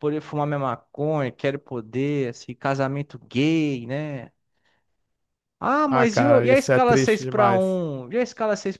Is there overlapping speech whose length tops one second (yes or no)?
yes